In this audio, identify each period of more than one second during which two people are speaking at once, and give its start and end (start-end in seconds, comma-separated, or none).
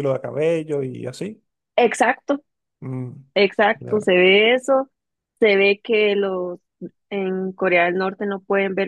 none